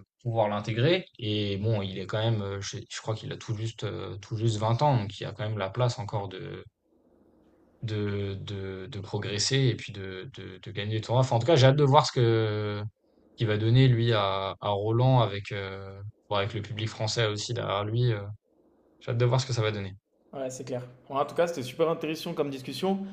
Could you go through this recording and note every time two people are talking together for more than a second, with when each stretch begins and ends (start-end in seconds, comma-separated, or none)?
none